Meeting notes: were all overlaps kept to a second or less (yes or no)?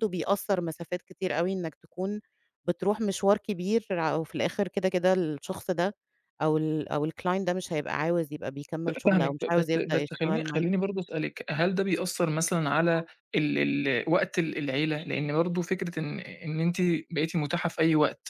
no